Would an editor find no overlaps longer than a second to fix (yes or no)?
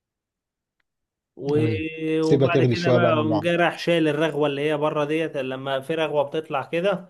no